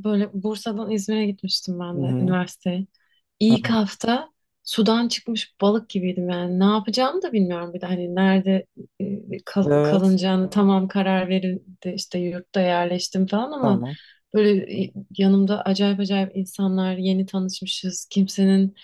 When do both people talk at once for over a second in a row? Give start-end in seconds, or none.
none